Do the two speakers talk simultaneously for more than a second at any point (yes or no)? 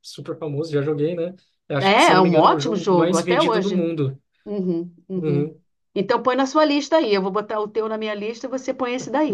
yes